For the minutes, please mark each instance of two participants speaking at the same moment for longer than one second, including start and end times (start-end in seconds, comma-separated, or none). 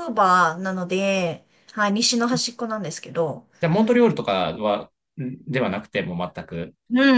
none